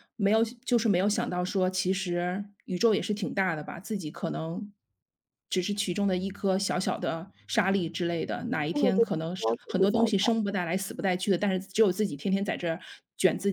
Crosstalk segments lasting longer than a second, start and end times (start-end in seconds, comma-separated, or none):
8.7-10.3